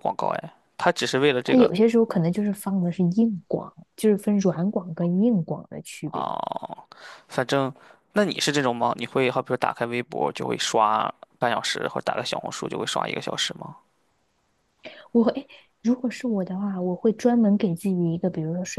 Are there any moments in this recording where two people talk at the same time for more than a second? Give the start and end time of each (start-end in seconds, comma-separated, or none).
none